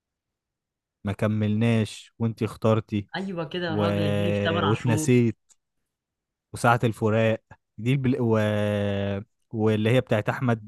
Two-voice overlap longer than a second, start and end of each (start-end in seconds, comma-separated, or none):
none